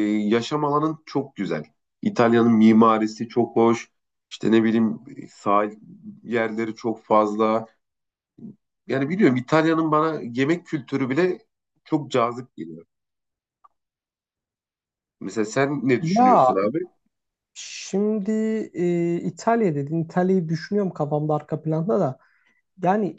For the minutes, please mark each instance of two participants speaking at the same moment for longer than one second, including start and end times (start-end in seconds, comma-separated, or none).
none